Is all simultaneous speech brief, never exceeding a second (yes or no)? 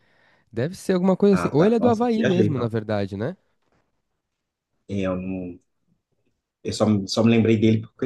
no